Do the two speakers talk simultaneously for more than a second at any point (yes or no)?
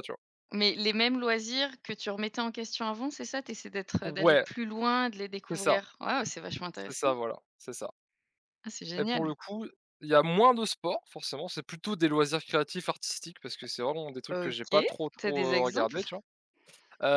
yes